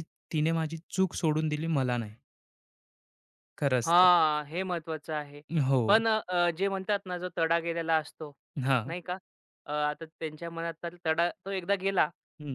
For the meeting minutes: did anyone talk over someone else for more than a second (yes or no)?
no